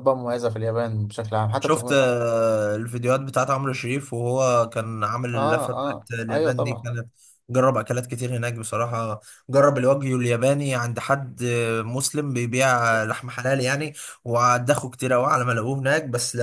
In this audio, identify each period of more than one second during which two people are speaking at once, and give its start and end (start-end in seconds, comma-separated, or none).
5.3-6.9